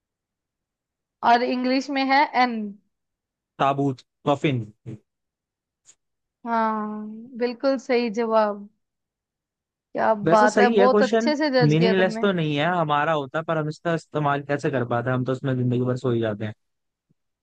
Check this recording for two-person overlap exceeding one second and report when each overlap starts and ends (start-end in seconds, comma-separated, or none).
10.2-12.2